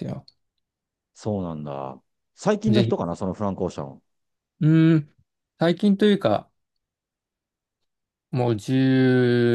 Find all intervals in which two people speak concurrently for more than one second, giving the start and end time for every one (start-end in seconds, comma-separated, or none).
none